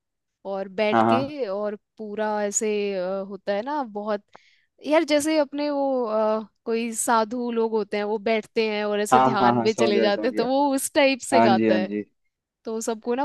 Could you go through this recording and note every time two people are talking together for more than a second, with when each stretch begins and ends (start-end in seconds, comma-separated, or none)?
9.1-10.5